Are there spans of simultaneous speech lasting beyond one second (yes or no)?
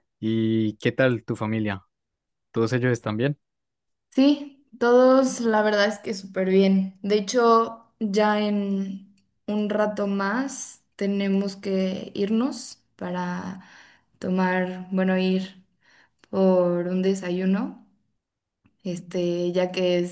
no